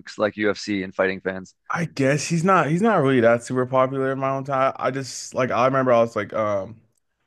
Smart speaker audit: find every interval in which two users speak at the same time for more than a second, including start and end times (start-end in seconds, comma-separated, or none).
none